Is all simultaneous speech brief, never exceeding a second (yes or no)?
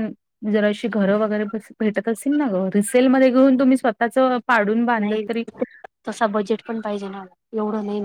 yes